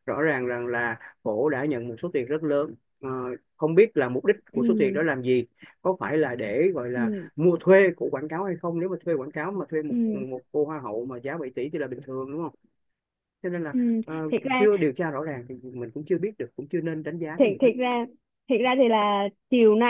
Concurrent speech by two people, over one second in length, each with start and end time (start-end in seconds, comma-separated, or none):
none